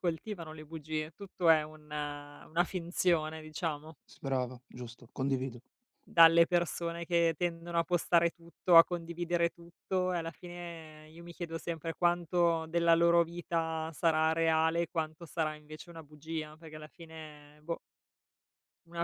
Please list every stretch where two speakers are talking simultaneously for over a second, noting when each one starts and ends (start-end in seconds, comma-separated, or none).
none